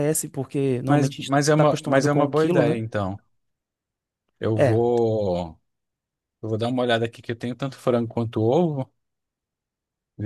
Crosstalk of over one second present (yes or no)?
yes